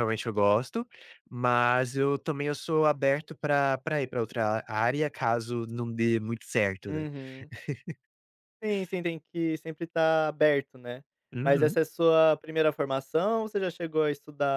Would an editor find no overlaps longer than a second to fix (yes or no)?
yes